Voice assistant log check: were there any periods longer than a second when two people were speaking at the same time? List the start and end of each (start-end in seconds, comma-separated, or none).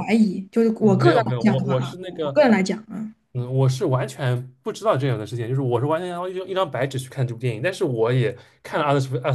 0.8-2.3